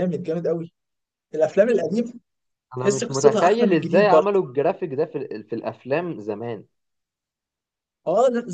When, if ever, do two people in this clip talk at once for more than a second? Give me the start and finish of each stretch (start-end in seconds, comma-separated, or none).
2.8-4.4